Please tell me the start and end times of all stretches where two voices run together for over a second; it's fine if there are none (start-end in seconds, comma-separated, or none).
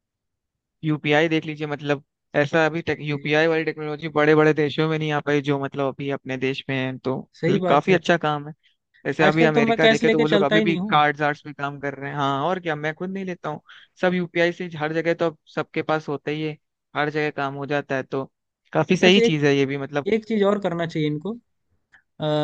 9.2-11.0